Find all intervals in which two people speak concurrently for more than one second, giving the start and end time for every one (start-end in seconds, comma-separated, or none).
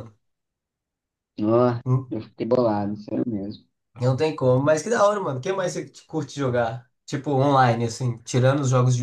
none